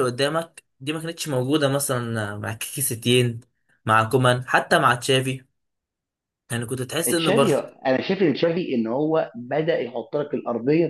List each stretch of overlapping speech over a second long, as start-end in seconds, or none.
none